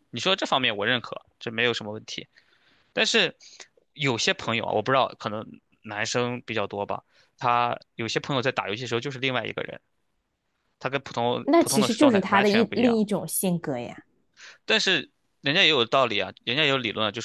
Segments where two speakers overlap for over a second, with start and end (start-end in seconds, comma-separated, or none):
11.4-13.0